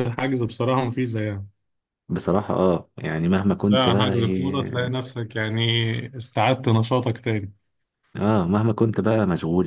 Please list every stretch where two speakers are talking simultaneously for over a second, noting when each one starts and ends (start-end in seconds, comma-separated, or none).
3.7-5.0